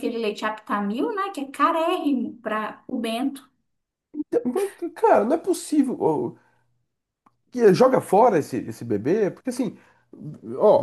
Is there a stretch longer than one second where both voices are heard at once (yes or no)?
no